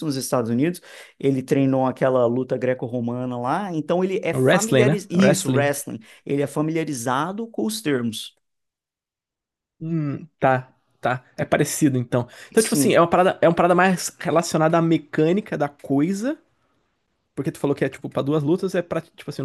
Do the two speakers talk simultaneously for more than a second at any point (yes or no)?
yes